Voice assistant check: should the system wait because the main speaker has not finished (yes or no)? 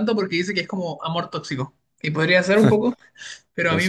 yes